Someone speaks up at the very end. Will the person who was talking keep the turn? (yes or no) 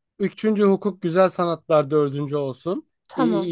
yes